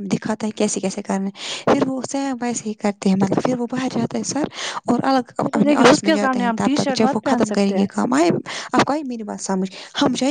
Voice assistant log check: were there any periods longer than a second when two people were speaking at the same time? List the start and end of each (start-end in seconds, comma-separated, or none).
5.5-7.9